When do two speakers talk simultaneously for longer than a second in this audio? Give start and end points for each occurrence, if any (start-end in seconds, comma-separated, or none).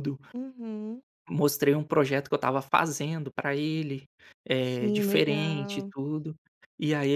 4.6-5.9